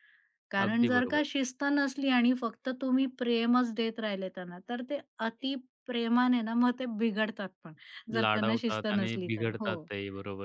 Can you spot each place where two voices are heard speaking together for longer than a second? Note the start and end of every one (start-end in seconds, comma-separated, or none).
8.2-9.9